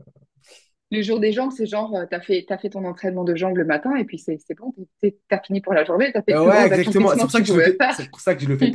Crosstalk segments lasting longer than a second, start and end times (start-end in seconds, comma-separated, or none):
6.3-8.0